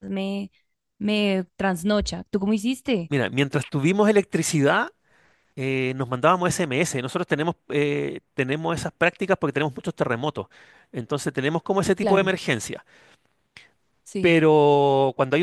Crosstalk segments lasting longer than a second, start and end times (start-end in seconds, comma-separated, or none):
none